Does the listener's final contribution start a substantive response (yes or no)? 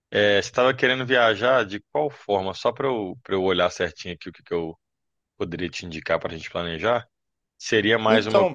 no